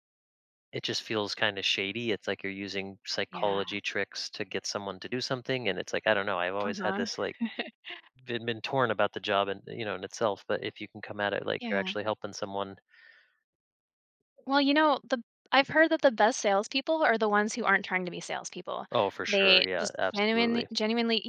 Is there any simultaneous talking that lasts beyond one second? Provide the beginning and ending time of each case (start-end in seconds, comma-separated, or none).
19.3-20.7